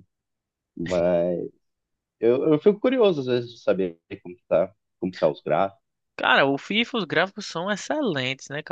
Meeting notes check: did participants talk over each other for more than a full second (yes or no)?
no